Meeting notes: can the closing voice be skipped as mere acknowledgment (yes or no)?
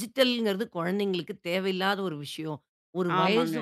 yes